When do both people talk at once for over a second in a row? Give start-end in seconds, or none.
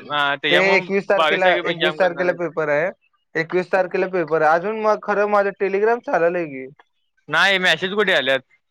0.5-2.4